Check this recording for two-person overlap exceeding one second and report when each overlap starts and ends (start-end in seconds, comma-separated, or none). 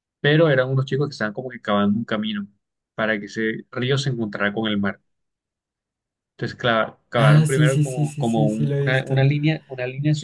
7.2-9.2